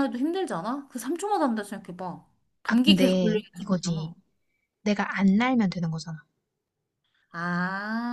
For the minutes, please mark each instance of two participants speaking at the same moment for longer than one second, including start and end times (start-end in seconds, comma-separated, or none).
2.7-4.2